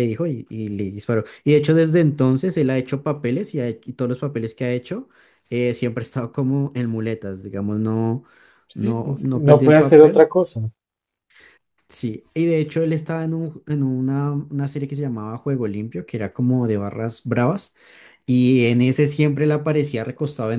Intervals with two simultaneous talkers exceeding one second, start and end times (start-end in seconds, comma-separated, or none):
8.8-10.2